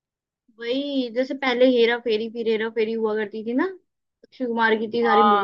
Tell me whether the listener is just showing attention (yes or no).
no